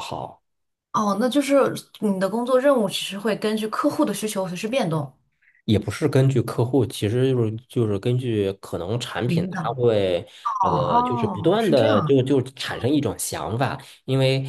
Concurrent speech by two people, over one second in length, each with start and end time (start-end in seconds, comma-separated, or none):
10.7-12.2